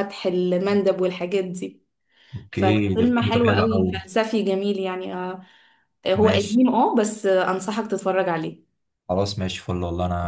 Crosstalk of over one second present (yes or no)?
yes